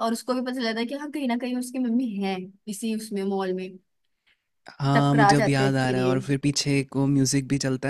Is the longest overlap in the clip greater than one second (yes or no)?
yes